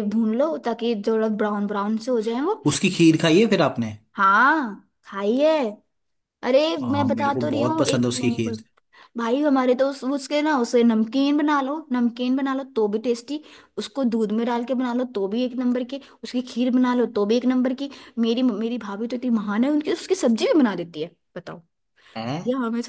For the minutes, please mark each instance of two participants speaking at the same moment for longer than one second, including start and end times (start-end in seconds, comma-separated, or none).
6.8-8.6